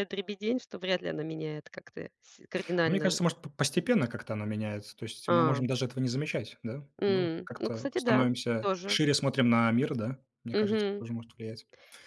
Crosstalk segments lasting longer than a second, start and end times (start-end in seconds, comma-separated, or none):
7.0-9.0